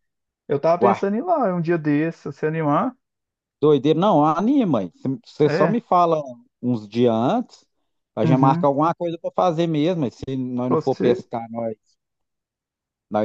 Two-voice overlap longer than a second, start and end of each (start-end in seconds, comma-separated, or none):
none